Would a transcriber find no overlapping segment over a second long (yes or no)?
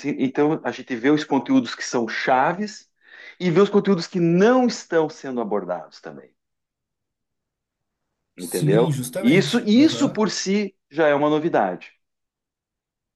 no